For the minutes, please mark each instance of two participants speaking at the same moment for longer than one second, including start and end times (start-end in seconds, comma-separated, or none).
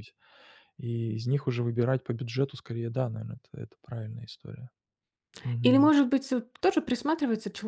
none